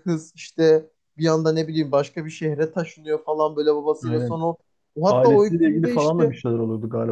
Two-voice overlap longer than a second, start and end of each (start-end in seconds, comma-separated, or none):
5.1-6.4